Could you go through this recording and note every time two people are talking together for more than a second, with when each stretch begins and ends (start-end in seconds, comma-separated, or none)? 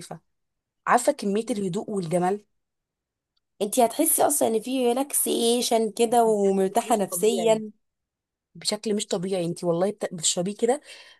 6.1-7.5